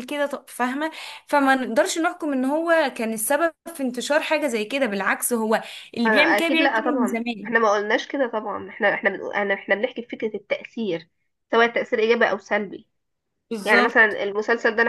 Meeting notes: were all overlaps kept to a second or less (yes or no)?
no